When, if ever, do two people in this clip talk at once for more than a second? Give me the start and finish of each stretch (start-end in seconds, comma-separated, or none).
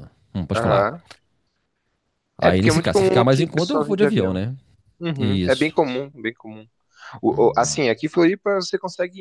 2.4-4.4